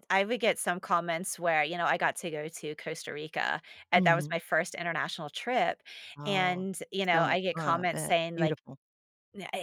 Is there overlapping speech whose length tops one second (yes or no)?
yes